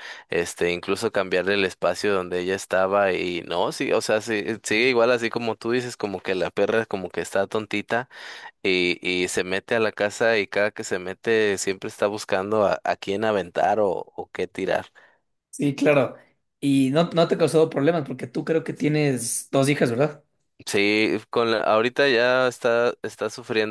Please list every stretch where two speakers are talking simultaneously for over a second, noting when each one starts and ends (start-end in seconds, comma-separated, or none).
none